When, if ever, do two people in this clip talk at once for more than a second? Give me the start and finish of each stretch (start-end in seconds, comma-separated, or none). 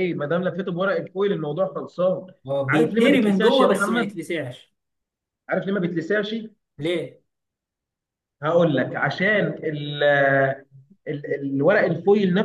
2.7-4.2